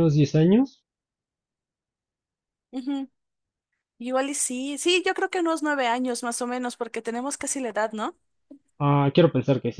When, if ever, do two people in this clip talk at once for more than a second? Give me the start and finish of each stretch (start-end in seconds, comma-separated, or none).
none